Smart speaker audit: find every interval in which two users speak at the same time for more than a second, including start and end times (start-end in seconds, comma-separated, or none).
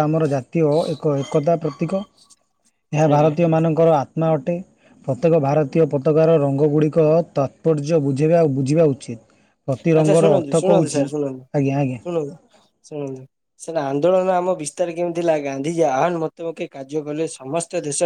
none